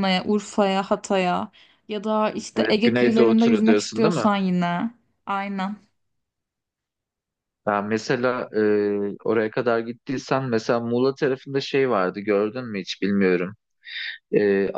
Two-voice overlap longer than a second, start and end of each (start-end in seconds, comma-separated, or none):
2.6-4.3